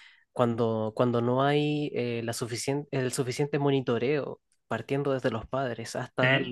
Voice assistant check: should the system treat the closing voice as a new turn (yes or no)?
no